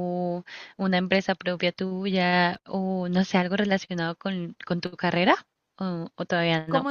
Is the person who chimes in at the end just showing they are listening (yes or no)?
no